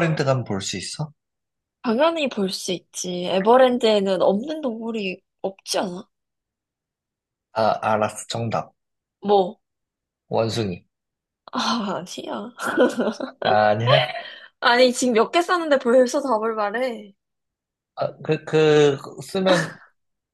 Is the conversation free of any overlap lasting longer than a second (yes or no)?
yes